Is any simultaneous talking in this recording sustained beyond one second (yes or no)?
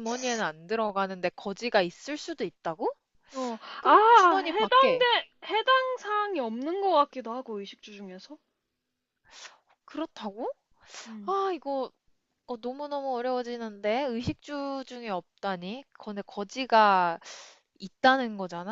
yes